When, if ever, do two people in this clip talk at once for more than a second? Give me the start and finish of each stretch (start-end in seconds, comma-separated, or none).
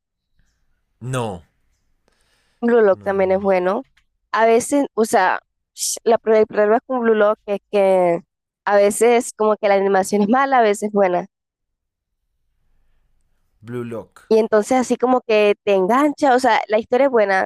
none